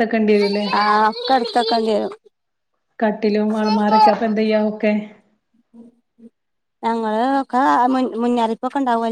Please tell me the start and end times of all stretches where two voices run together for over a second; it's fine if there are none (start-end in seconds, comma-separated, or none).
none